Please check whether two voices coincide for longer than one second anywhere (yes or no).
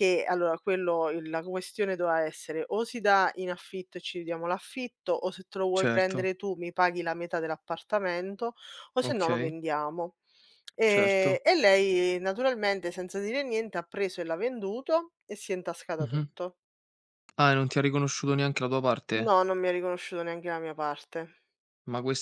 no